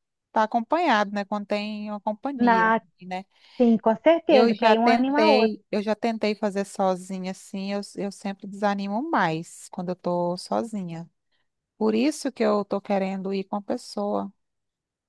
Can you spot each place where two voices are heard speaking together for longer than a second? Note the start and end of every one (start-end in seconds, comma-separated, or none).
4.3-5.6